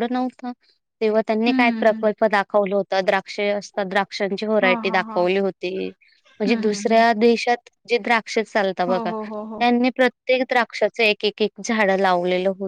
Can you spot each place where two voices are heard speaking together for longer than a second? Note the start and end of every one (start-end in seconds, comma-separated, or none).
none